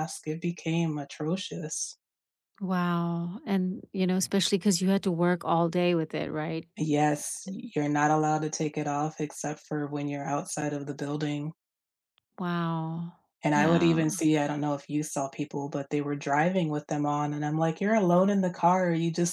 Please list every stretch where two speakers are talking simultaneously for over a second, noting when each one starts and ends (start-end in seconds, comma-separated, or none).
none